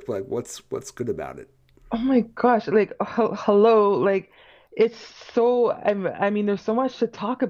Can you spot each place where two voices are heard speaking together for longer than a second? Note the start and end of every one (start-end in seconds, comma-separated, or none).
none